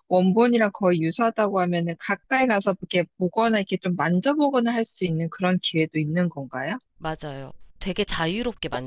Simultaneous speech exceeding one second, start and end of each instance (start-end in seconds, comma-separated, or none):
none